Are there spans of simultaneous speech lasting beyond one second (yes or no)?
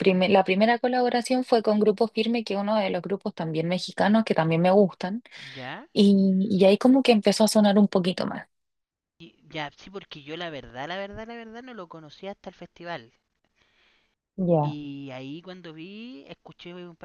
no